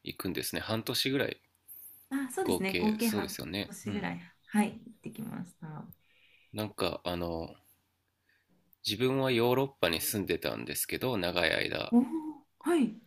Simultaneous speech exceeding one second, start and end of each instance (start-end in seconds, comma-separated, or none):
2.4-4.1